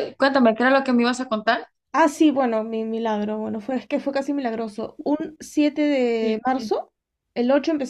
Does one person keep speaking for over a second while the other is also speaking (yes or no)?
no